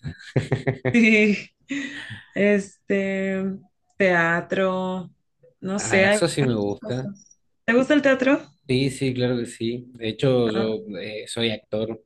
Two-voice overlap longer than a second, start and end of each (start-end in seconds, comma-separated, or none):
5.8-7.1